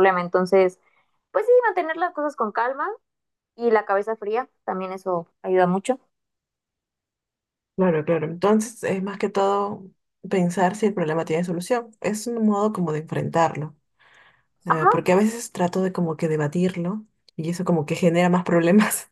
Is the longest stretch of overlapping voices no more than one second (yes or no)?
yes